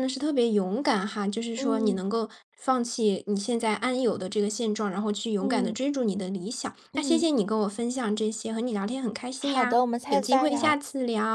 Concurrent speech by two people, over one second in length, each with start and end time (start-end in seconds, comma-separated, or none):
9.4-10.8